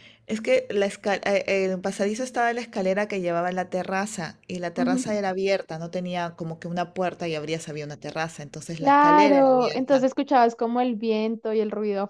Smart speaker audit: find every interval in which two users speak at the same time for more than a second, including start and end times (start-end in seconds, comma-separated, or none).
8.7-10.1